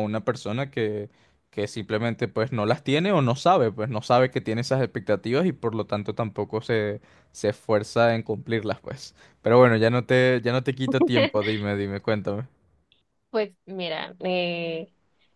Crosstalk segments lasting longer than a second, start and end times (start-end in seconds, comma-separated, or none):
none